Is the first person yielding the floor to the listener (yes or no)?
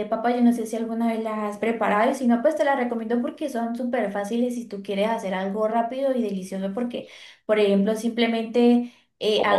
no